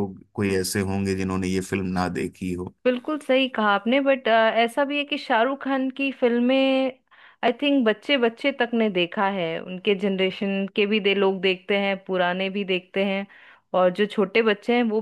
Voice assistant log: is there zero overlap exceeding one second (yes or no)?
yes